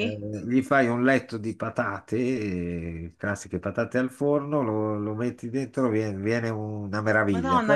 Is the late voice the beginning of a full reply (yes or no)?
yes